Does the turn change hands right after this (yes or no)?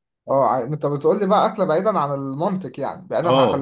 yes